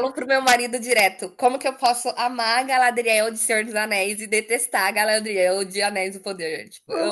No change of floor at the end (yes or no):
no